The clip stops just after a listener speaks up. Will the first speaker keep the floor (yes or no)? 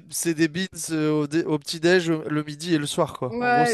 no